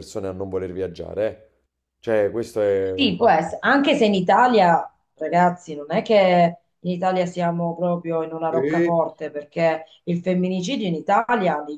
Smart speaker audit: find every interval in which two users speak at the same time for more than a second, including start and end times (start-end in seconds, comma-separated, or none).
none